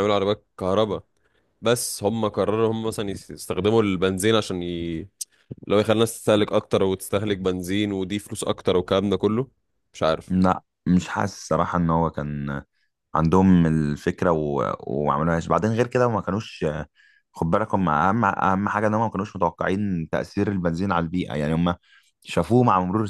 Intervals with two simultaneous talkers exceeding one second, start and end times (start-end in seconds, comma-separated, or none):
none